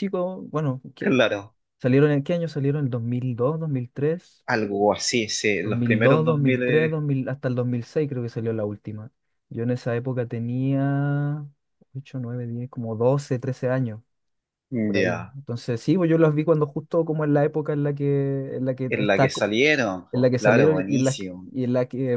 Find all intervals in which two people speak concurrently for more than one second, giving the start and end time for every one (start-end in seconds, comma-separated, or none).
5.6-7.0, 20.1-21.5